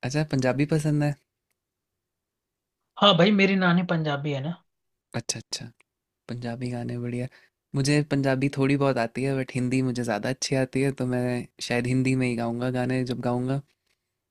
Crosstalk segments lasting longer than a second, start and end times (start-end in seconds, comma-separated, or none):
none